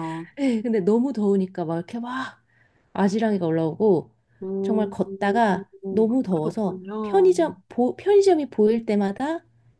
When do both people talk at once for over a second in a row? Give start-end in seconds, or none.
4.6-7.3